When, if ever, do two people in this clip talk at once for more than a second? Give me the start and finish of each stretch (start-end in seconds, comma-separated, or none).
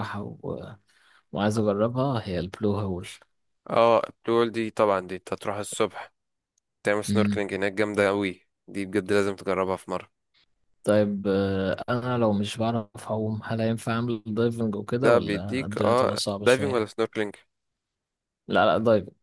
15.0-16.9